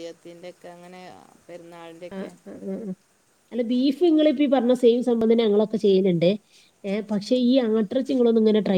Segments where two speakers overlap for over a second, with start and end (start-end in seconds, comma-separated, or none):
none